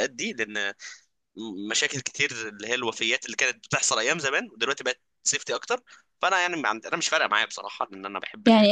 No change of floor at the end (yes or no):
no